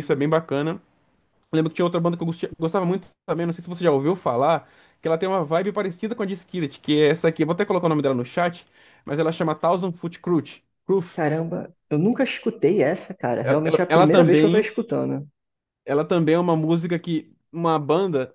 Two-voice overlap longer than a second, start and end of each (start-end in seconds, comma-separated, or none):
13.4-14.7